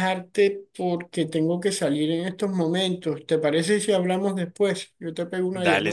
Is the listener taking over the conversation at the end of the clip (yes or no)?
yes